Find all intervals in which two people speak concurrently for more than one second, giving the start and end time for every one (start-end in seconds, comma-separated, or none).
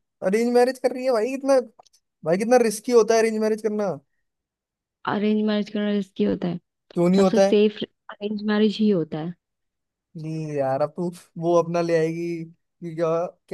none